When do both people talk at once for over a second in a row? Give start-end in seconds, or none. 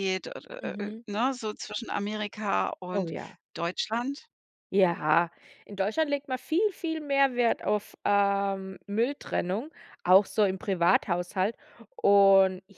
none